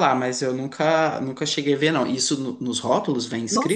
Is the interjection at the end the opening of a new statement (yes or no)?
yes